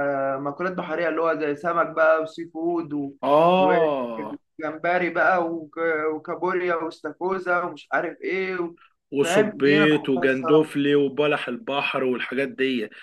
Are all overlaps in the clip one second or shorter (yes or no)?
no